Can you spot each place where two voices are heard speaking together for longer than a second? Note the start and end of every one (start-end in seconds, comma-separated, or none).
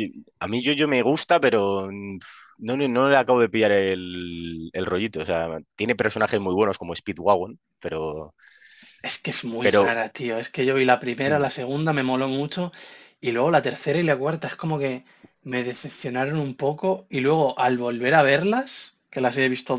none